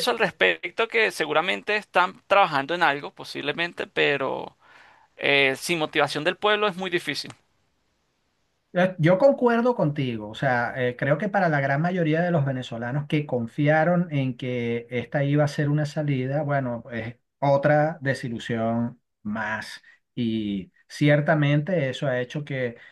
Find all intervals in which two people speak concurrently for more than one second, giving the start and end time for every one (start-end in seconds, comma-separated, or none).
none